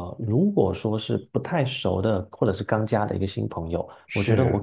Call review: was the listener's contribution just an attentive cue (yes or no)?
yes